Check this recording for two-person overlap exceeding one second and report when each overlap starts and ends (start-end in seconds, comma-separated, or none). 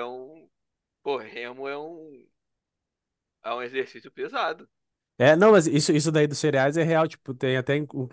none